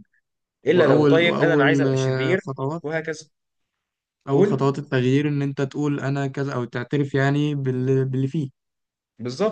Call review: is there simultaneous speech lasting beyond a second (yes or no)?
yes